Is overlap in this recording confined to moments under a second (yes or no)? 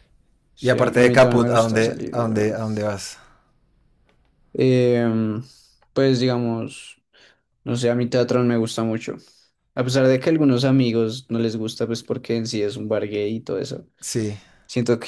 no